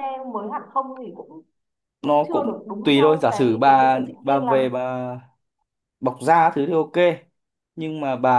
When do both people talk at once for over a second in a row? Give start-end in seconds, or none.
2.0-4.6